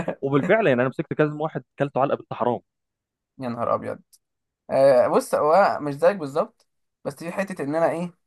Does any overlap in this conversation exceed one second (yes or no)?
no